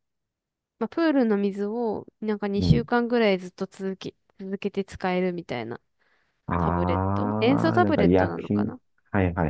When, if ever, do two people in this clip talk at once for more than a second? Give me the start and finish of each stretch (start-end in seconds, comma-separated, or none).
6.6-8.7